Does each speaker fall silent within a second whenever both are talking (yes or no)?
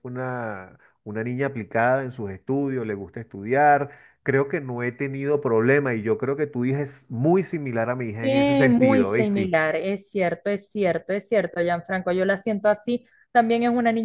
no